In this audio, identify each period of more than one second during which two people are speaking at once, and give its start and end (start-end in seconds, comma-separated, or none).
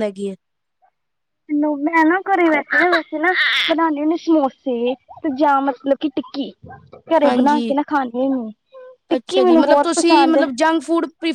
none